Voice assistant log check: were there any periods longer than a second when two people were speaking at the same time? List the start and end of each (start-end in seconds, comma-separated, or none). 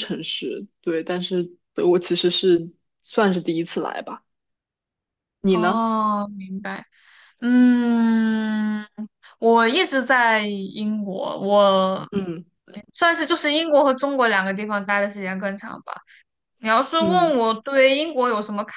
none